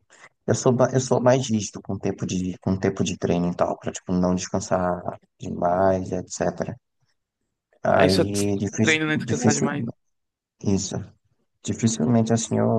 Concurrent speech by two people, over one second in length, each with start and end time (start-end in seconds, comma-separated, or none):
7.9-9.7